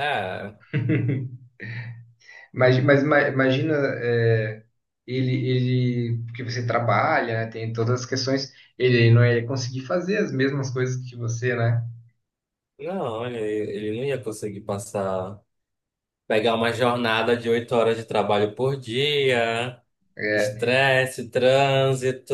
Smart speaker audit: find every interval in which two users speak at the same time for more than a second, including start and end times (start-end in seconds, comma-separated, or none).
none